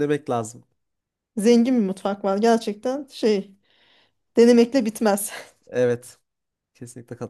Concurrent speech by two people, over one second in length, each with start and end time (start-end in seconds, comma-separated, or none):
none